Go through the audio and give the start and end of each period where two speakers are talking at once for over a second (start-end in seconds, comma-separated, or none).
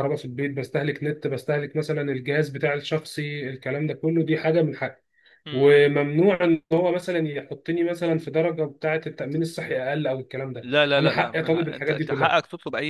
10.6-12.4